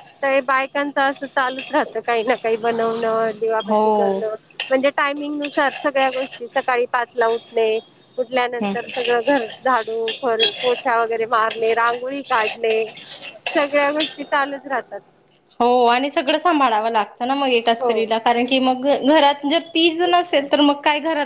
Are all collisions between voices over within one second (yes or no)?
yes